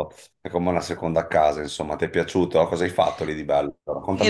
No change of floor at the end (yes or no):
no